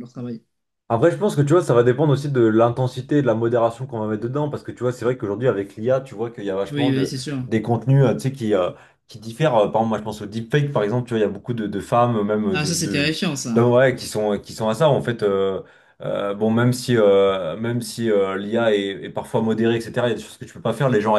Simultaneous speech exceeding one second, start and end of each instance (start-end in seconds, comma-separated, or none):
none